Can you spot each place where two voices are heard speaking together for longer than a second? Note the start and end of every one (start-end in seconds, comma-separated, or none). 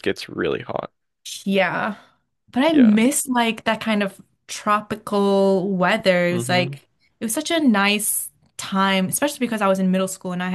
none